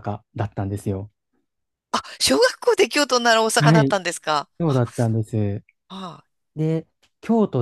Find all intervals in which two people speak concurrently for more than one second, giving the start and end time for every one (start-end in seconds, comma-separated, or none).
none